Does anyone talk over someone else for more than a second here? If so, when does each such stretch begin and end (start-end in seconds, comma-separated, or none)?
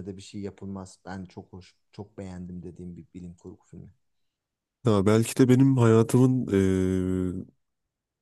none